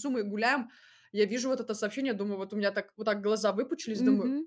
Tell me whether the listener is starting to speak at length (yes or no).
yes